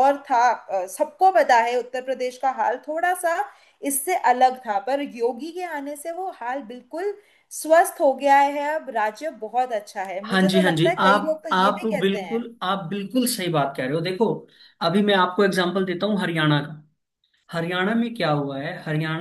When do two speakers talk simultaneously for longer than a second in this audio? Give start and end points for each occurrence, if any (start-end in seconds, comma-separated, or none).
10.3-12.4